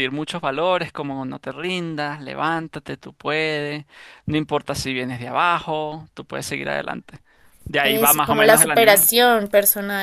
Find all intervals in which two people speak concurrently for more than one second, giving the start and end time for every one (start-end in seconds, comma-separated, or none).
7.8-9.0